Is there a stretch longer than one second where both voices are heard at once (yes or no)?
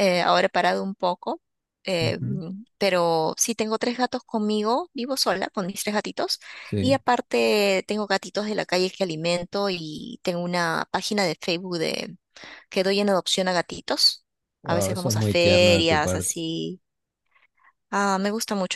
yes